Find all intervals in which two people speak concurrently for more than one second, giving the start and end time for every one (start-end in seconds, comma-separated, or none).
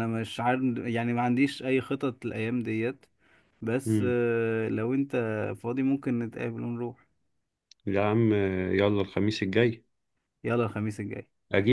none